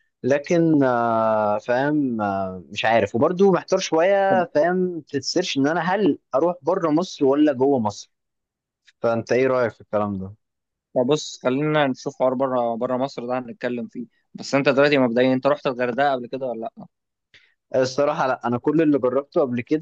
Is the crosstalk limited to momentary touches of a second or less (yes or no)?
yes